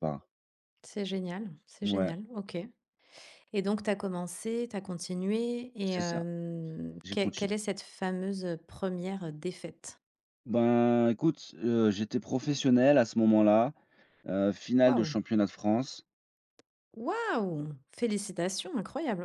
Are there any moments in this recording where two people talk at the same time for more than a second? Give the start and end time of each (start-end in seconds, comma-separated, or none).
none